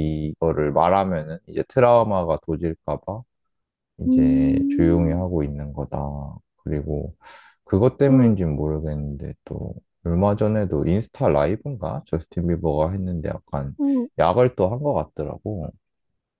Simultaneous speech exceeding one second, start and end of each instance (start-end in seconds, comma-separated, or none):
4.1-5.3